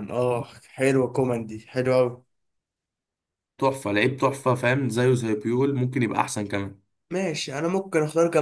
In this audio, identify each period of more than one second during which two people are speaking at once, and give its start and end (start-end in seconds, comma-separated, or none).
none